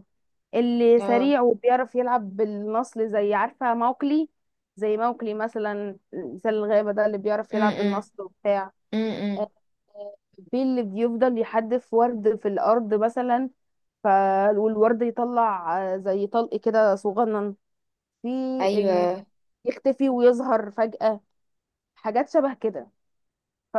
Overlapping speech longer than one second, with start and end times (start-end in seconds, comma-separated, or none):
none